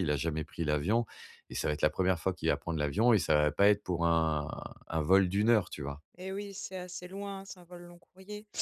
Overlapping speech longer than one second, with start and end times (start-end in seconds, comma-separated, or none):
none